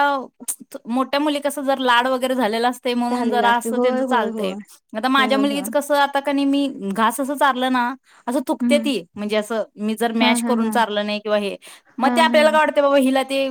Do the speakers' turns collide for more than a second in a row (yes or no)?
yes